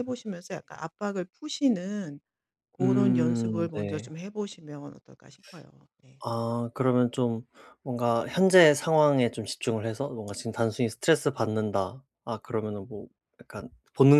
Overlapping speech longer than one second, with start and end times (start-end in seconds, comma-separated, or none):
2.8-4.1